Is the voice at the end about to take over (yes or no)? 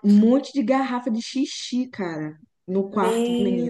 yes